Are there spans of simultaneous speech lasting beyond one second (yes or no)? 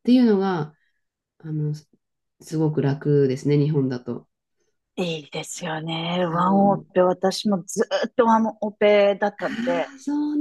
no